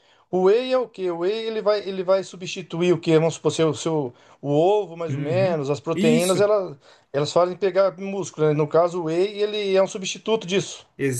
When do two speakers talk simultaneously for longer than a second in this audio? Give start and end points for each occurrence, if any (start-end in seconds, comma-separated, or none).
5.1-6.5